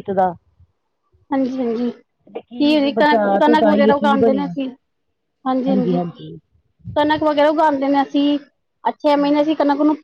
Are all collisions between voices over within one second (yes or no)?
no